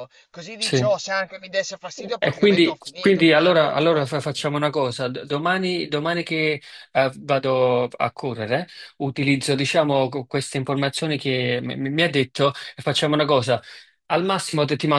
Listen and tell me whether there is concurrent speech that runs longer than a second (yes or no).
yes